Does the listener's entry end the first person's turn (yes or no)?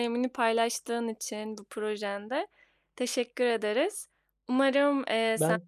no